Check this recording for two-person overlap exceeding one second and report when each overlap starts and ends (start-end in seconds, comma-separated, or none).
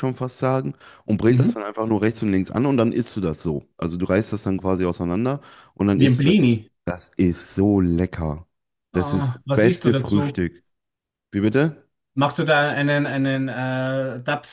8.9-10.4